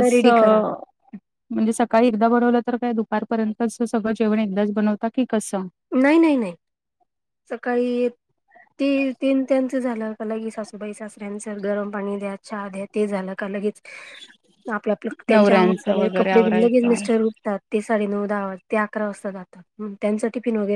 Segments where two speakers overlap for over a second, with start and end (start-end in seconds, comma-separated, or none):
15.3-17.0